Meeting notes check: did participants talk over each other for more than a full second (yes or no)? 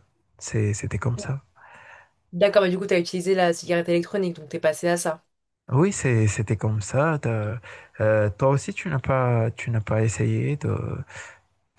no